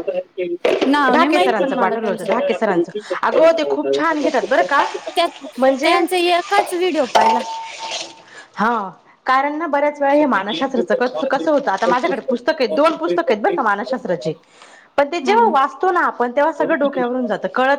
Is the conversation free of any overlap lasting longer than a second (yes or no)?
no